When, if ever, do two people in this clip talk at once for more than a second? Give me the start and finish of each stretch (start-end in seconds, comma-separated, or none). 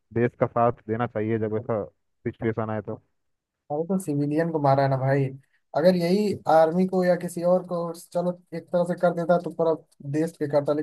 none